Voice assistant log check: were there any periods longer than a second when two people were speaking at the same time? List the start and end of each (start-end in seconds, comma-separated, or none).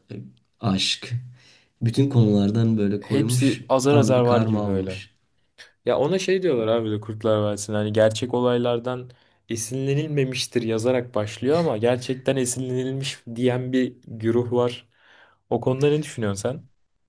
3.0-5.0